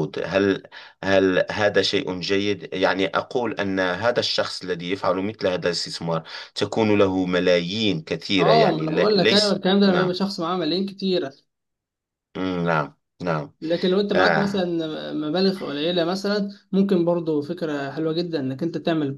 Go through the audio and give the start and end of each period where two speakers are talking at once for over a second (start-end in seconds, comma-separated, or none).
8.4-10.2